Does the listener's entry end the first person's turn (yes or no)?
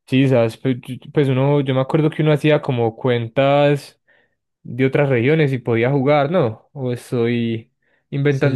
yes